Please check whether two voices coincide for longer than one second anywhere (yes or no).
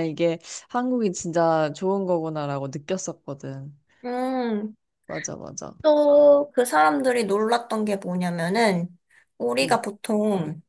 no